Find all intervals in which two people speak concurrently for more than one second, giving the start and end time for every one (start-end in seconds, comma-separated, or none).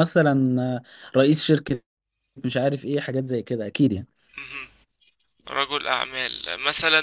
none